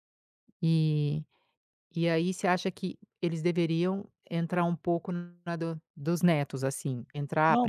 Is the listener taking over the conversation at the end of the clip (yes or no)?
yes